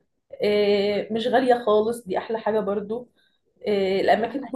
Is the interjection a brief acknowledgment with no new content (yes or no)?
yes